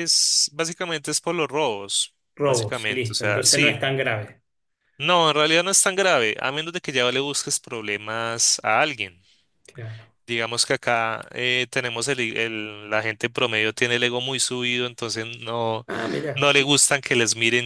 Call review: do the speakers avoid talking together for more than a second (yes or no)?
no